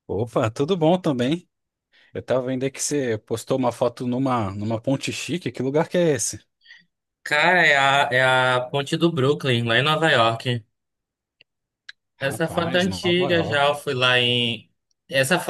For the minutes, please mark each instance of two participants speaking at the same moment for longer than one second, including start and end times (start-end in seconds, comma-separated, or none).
12.2-13.7